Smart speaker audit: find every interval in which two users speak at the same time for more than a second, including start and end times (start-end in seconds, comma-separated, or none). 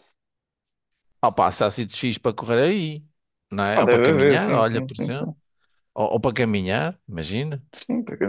3.7-5.3